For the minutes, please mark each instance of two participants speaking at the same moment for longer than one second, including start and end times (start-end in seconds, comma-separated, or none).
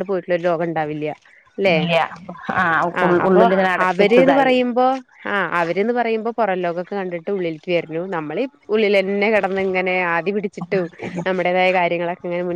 none